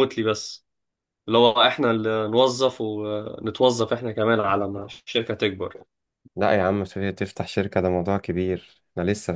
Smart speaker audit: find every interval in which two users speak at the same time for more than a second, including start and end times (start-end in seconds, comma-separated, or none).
none